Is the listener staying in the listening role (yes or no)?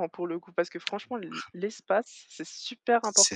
no